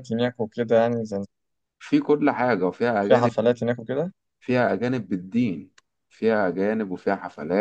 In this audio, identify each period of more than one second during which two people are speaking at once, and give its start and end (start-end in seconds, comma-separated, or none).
none